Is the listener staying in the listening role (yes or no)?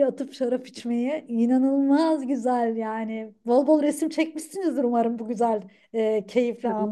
no